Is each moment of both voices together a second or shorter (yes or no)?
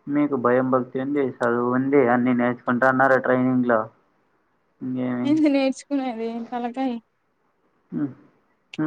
yes